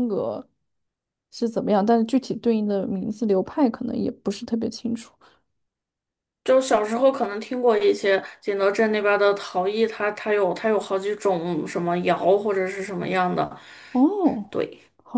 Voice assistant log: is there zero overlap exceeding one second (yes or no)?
yes